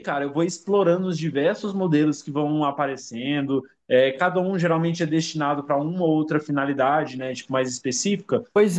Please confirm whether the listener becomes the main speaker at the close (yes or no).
yes